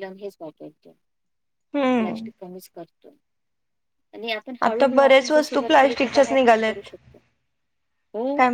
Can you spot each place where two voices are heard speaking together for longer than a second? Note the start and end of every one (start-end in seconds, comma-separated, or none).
4.7-6.9